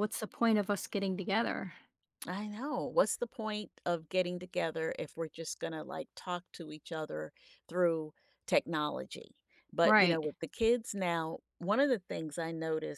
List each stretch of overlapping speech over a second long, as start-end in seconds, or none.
none